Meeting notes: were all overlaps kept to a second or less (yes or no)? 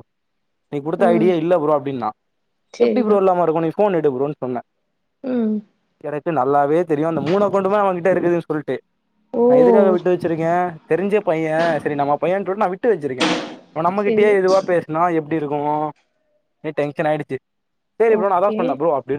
yes